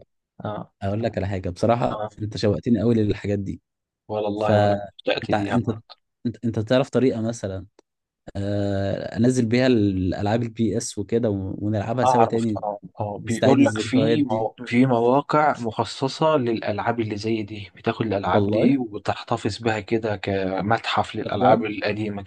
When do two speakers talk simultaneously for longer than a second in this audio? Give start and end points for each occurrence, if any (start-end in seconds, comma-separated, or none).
4.4-5.7, 13.3-14.5